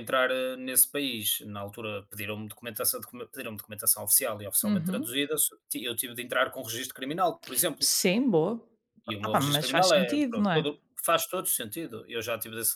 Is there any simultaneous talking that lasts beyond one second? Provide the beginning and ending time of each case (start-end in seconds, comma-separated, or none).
9.2-10.6